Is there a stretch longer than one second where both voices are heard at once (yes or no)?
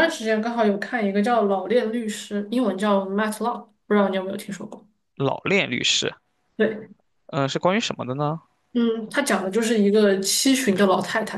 no